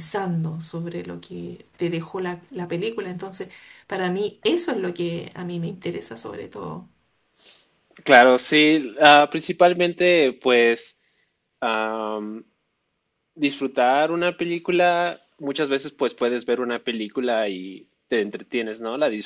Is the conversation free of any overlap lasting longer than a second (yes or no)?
yes